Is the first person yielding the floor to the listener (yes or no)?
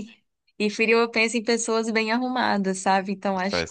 no